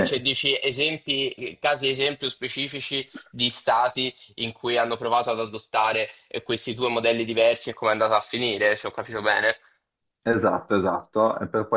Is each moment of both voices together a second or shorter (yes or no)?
yes